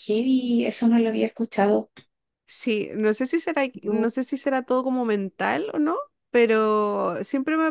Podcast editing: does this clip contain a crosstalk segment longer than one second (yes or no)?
no